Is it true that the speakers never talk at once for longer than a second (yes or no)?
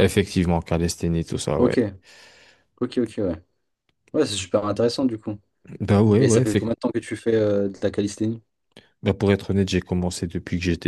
yes